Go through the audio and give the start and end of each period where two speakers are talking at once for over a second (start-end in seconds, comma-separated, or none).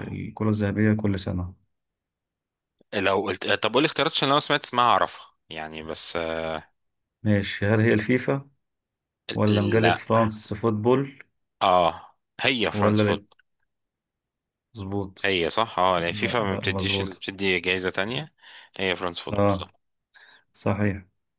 16.0-17.2